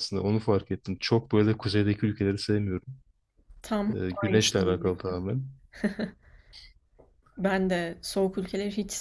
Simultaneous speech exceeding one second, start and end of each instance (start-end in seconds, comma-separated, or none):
3.9-5.2